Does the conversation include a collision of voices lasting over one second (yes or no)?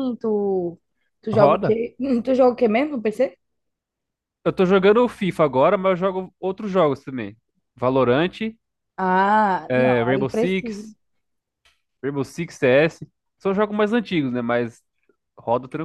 yes